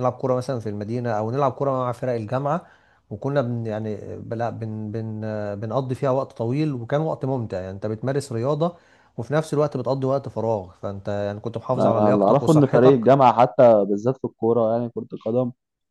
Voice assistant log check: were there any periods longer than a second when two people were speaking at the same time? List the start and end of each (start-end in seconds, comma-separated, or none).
11.8-13.1